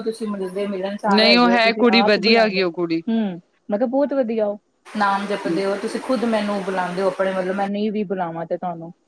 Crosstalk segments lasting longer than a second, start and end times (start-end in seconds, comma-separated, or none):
1.1-3.0